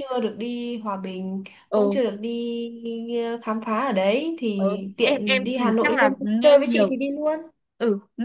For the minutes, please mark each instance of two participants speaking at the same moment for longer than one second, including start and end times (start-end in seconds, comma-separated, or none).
4.6-7.0